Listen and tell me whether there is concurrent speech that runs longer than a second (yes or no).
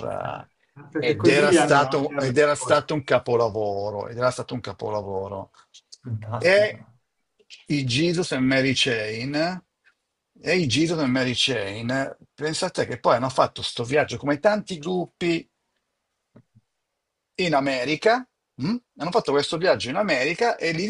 yes